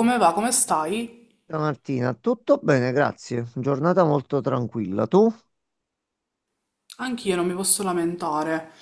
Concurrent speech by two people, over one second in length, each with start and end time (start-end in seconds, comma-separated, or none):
none